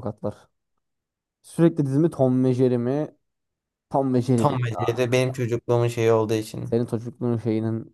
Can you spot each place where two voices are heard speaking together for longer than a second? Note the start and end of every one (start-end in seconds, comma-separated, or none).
none